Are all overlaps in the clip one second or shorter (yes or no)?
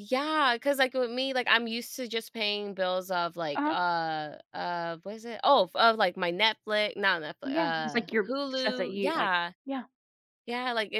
no